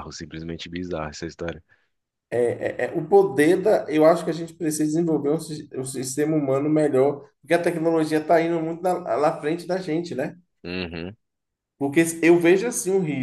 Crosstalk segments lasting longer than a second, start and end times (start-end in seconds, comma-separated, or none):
none